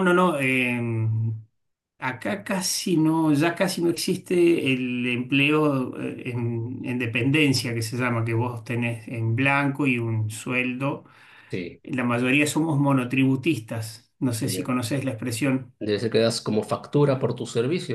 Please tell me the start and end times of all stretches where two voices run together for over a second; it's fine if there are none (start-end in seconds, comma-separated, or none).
none